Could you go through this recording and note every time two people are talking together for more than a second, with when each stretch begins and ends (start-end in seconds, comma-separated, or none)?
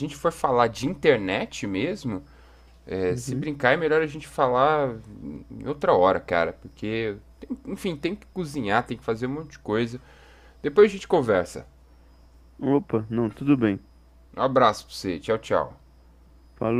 none